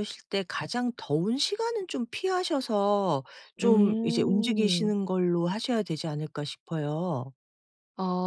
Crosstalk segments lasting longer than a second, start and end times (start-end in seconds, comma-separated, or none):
3.6-4.9